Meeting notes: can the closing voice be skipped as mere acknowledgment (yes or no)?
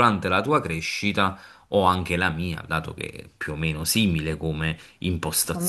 yes